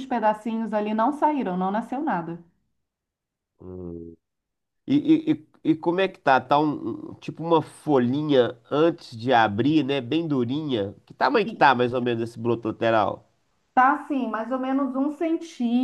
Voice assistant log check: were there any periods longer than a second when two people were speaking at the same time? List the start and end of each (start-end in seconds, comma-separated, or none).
none